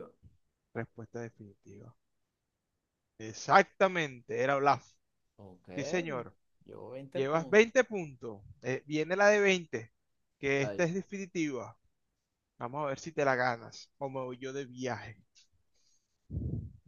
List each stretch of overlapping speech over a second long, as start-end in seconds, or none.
none